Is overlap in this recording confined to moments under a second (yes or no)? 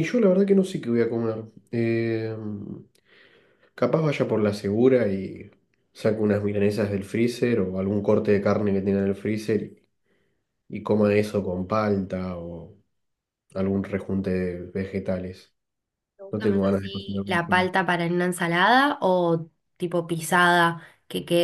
no